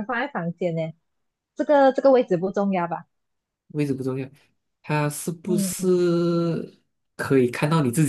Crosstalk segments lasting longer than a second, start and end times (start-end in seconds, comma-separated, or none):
none